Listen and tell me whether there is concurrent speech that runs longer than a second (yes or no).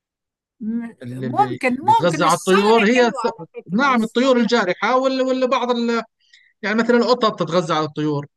yes